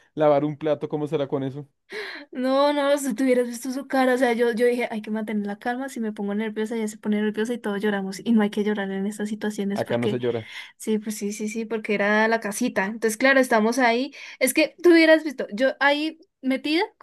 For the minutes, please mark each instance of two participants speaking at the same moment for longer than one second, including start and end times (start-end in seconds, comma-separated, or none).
none